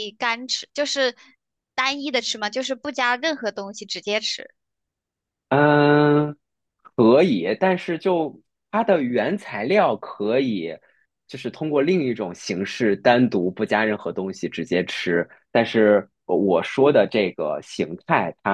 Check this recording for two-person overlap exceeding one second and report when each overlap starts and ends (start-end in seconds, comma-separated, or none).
none